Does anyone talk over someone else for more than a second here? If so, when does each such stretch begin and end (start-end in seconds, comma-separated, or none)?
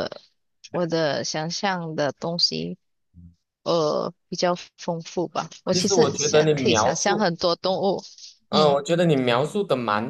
5.7-7.2